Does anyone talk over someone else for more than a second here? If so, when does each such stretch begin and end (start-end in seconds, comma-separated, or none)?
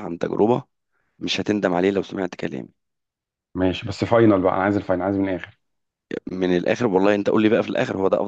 none